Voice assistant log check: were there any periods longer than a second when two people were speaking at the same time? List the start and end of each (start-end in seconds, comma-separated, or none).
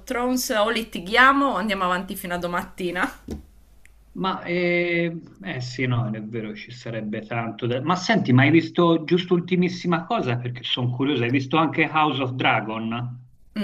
none